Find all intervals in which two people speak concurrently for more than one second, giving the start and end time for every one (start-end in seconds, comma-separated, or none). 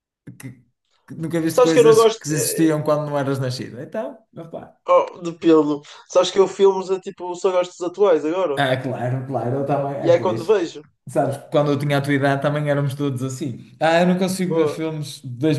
1.5-2.7